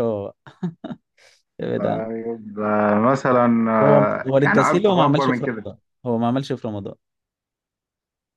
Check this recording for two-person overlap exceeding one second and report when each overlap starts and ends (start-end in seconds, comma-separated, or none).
3.8-5.7